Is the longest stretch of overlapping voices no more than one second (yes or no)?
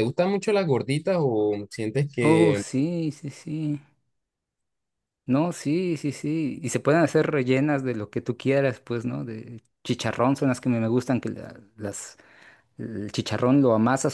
yes